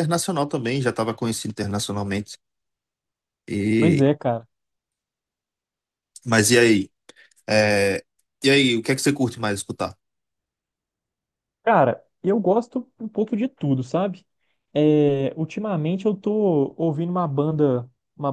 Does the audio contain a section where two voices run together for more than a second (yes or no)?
no